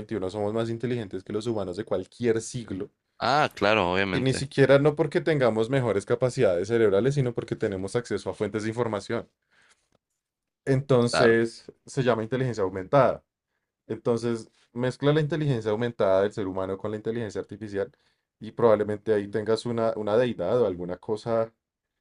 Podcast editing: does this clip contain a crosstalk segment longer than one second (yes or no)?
no